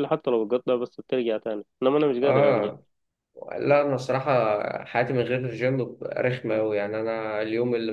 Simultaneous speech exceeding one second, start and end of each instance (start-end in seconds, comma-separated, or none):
none